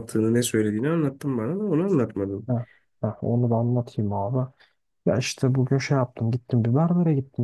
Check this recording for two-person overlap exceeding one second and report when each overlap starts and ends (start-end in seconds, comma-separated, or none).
none